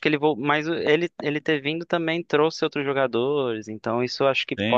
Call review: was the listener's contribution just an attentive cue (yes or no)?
no